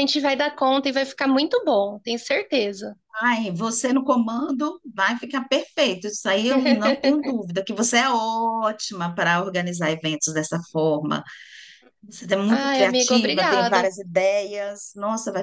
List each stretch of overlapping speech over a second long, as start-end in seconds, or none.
12.5-13.9